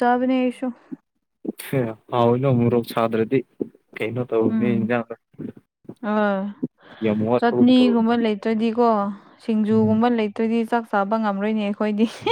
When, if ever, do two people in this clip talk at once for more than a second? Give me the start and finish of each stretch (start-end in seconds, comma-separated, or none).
none